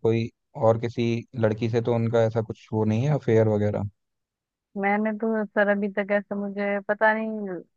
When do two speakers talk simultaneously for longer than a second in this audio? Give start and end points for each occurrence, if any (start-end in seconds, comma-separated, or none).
none